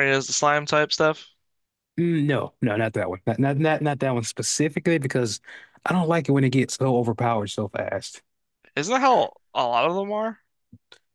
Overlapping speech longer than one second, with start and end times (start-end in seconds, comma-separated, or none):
none